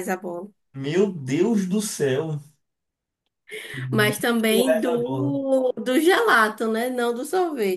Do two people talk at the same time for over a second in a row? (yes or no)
yes